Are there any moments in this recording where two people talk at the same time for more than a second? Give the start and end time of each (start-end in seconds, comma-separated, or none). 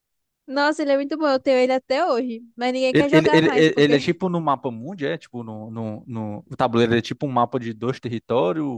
2.9-4.2